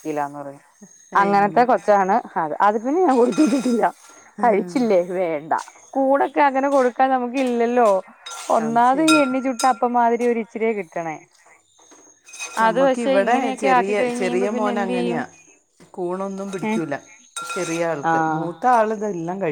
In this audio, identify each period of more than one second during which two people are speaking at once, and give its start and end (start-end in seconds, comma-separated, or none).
12.7-15.2